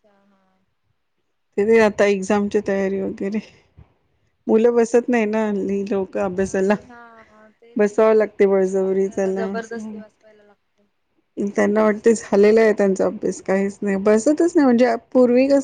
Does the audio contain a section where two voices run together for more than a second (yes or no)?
yes